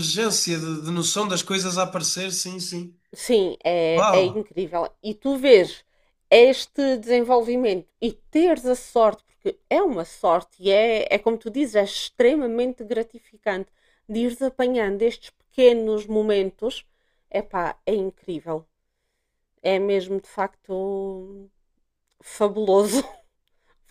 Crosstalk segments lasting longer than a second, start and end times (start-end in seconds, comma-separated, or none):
none